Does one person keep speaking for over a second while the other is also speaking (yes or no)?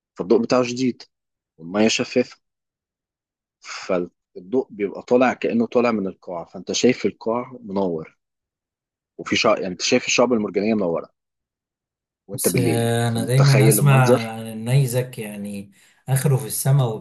yes